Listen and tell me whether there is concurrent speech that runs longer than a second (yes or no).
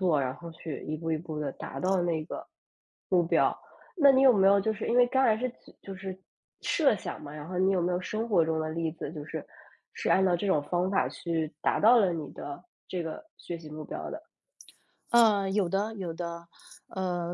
no